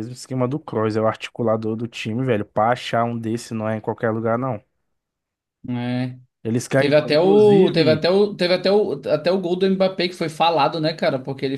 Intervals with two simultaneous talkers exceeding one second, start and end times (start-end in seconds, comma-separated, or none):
6.8-8.1